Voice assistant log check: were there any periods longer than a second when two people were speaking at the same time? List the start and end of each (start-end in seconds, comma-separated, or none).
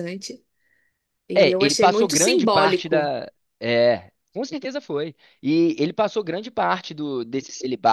1.4-3.1